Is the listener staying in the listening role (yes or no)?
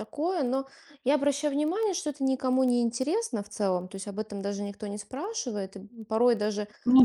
yes